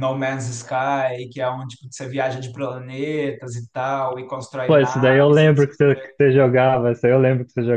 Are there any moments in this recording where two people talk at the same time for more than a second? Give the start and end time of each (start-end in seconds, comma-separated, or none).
4.7-6.2